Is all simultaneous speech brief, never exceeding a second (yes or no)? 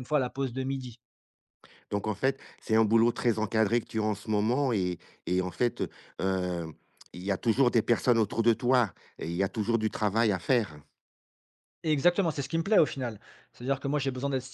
yes